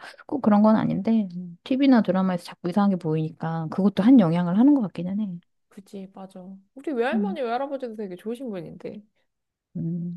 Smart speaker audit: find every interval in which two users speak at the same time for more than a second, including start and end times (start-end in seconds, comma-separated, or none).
none